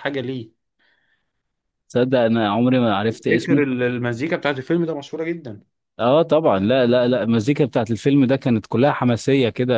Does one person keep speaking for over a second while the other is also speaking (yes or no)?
no